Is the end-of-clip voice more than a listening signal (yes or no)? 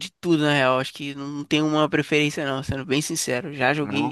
no